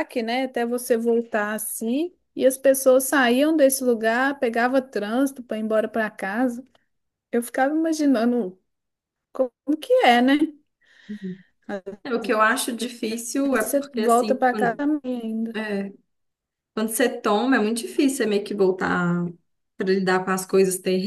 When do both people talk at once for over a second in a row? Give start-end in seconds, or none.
13.5-14.8